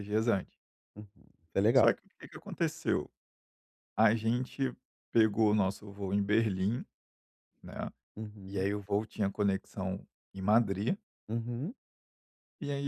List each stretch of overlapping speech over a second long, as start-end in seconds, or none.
none